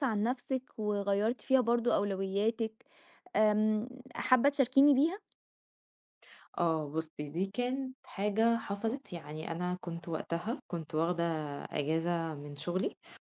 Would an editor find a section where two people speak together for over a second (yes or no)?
no